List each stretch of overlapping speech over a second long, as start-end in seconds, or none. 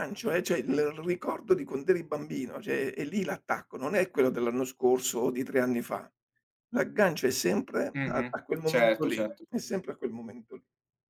7.9-9.4